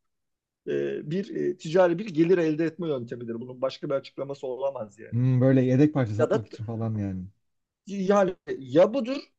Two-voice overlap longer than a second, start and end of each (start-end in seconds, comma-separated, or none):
none